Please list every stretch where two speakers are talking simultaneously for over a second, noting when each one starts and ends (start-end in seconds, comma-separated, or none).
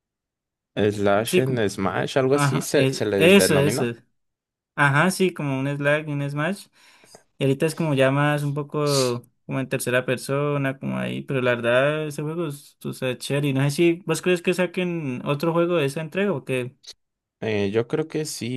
2.3-3.9